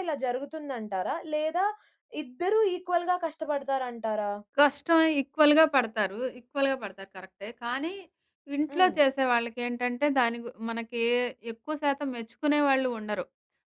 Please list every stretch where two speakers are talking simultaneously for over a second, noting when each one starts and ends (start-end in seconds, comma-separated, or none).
none